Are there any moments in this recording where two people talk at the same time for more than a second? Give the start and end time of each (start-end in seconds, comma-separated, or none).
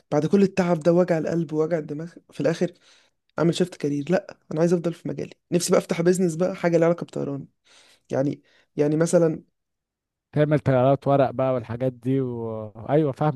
none